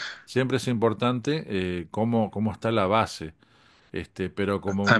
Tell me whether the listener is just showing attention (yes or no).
no